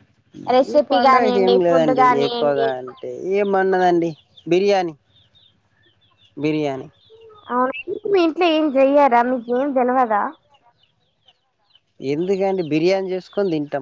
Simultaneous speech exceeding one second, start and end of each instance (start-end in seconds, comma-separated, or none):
0.7-2.7